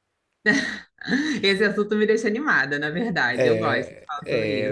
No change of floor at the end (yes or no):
no